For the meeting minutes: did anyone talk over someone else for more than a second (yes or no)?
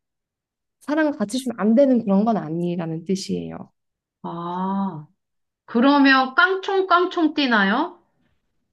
no